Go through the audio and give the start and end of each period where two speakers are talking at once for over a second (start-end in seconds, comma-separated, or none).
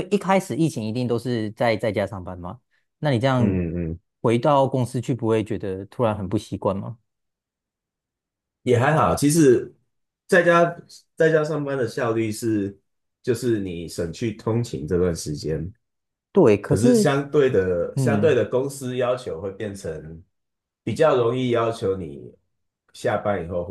none